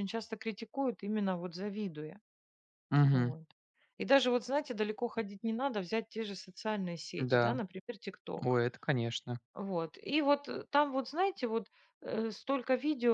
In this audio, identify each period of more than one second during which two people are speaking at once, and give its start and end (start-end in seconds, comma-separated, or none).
none